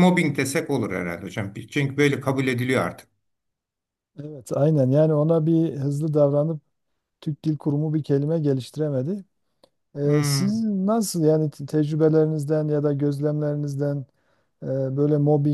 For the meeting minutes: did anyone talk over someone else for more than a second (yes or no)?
no